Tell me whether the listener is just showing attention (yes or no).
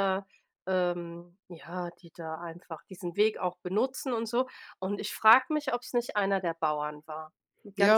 no